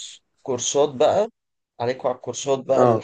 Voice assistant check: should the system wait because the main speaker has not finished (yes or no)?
yes